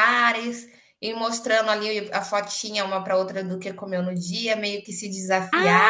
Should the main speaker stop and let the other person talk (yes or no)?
yes